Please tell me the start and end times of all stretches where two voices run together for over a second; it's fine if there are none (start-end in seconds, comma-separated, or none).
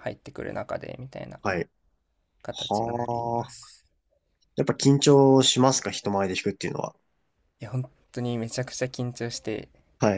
2.5-3.7